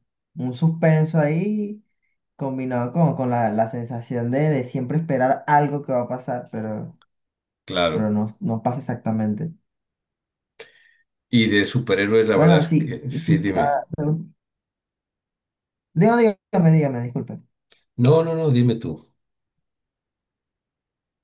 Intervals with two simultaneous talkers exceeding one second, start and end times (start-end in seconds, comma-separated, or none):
12.3-13.8